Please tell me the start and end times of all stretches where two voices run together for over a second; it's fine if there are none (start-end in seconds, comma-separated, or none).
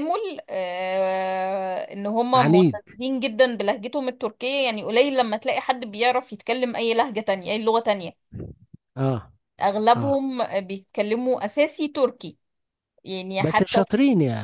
none